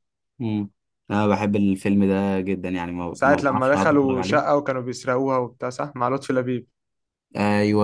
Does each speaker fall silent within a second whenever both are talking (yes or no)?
no